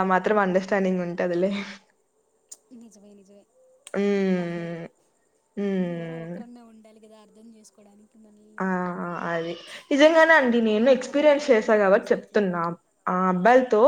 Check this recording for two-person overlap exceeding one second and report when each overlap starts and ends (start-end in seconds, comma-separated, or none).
10.9-12.4